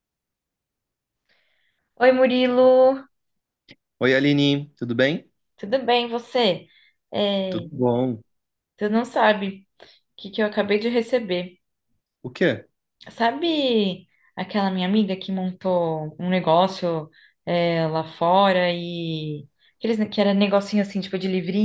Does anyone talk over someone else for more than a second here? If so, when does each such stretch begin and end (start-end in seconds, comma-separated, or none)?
none